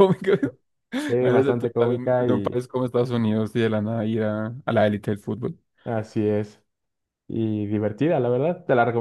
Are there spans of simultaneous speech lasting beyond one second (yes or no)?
yes